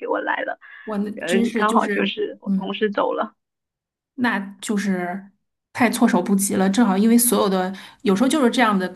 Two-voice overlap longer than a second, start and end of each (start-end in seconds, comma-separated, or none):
1.1-2.8